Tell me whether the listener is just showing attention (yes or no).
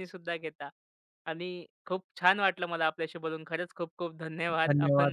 no